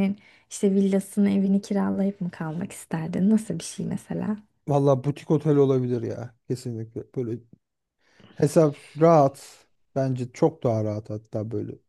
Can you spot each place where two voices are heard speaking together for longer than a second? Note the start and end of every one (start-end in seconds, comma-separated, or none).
none